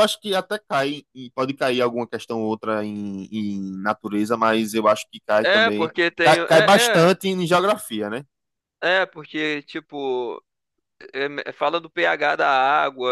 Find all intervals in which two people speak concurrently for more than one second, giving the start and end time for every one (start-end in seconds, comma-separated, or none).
5.4-7.1